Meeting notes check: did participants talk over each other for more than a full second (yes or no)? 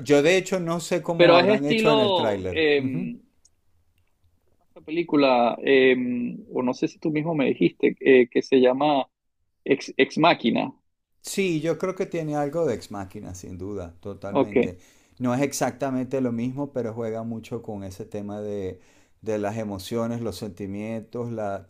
yes